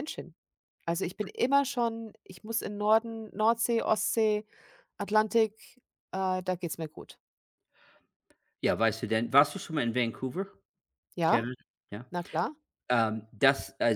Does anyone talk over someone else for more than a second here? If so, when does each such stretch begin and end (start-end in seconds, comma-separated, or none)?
none